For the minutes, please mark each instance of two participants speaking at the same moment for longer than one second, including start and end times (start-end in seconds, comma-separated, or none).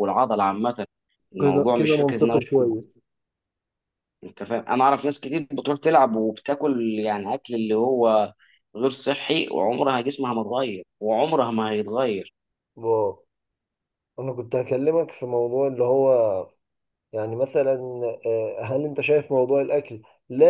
1.4-2.6